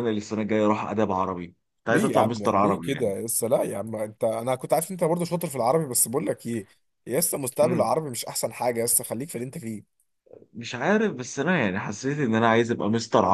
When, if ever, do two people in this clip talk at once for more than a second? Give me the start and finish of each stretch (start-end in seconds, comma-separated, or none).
1.9-3.2